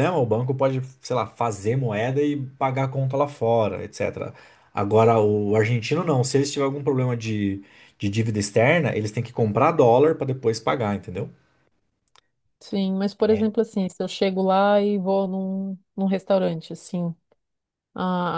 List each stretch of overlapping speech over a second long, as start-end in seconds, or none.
none